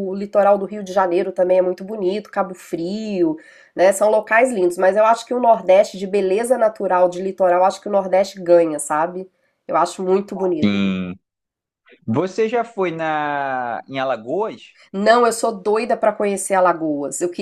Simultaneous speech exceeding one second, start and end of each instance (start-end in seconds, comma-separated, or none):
none